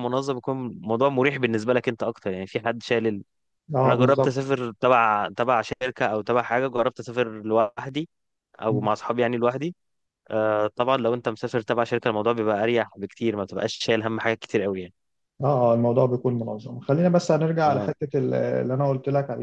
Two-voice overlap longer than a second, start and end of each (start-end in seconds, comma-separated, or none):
none